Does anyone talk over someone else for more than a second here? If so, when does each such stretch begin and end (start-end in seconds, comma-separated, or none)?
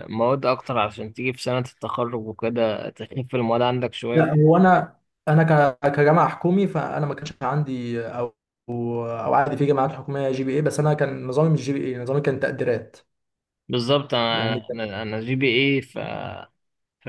none